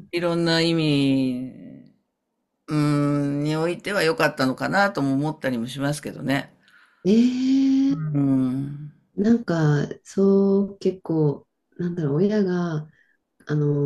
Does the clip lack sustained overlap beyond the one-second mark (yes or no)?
yes